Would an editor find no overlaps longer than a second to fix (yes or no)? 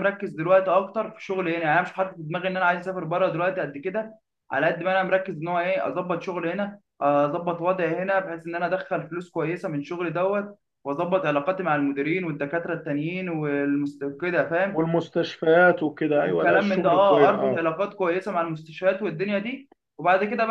no